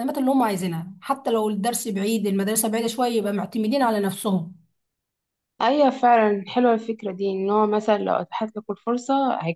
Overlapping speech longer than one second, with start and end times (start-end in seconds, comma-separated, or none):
none